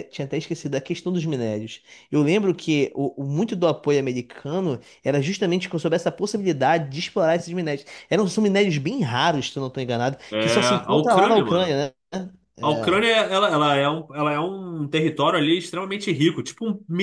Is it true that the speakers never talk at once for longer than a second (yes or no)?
no